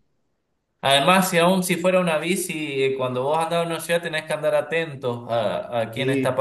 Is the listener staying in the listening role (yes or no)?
yes